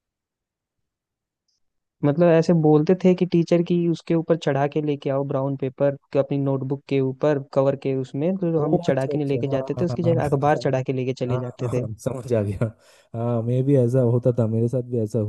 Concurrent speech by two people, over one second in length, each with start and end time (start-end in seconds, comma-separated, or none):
8.6-10.4